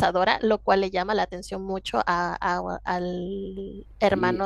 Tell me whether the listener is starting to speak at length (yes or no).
yes